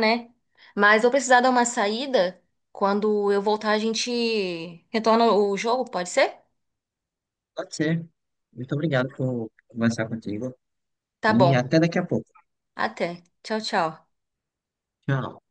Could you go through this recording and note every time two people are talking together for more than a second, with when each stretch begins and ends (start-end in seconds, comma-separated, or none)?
none